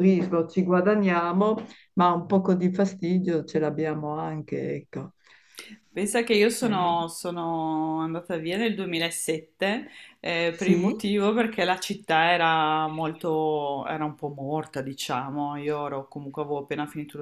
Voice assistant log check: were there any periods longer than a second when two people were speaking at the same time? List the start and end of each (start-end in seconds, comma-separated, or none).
none